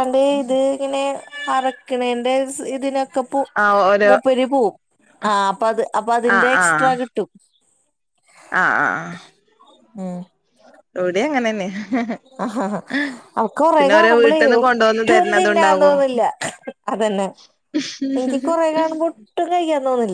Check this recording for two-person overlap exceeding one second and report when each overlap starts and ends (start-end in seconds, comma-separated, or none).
13.8-16.0